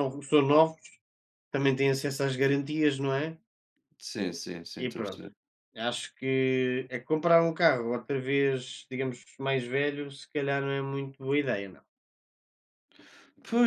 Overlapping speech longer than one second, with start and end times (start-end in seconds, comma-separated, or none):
none